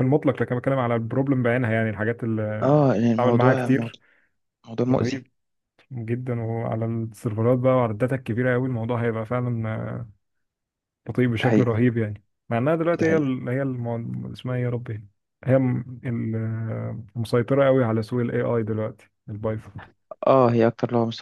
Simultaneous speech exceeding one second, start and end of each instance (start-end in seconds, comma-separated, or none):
2.6-4.0